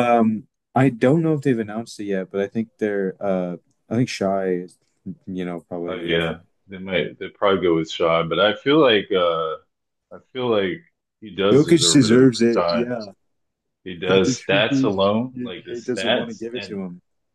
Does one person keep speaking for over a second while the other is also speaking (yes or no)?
yes